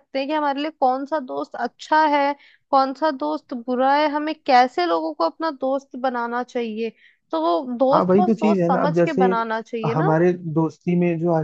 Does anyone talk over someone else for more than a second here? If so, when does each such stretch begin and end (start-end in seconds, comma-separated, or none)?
7.9-9.2